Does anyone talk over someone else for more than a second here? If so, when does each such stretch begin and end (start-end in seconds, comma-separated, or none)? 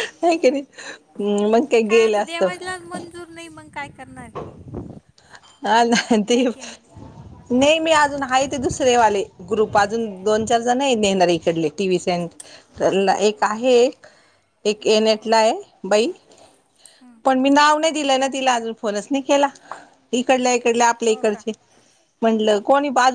none